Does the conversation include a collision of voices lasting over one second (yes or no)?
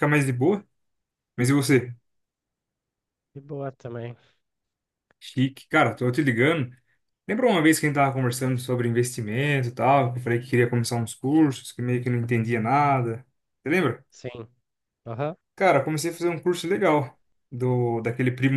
no